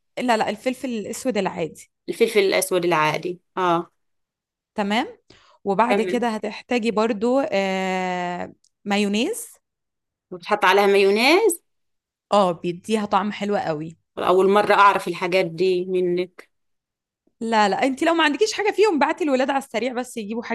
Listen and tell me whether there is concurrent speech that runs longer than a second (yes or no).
no